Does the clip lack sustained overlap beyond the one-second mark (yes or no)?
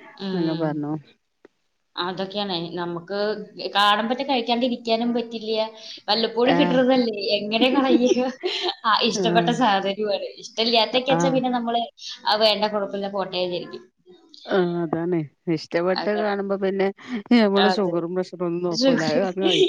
yes